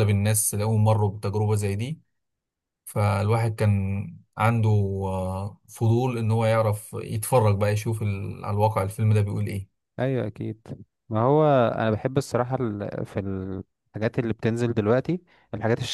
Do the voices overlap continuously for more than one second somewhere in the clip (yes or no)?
no